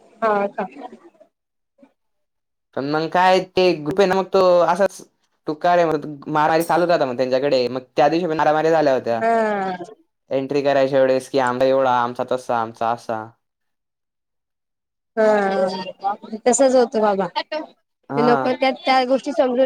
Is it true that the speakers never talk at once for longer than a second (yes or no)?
yes